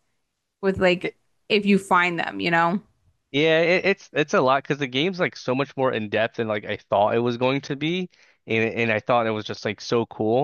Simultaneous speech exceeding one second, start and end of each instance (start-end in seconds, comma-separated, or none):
none